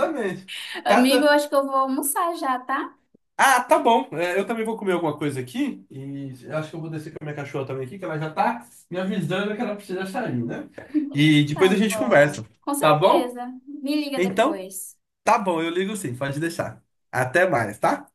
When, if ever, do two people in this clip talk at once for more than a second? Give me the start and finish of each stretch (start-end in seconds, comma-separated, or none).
11.5-13.4